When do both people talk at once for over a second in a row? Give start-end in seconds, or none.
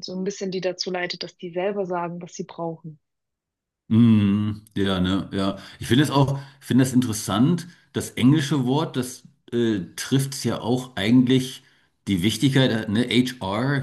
none